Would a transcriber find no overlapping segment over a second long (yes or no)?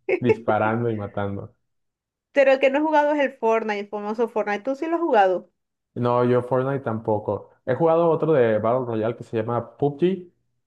yes